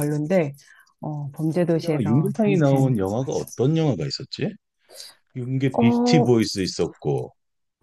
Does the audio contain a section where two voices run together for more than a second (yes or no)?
yes